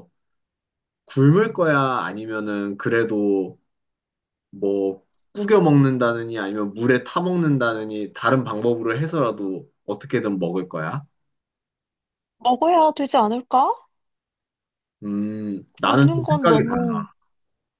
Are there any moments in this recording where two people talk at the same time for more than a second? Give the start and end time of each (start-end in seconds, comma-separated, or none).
15.8-17.1